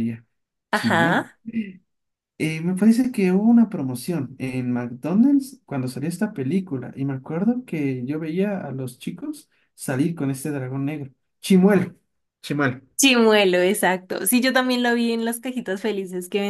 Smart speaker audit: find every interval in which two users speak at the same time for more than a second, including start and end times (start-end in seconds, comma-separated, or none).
none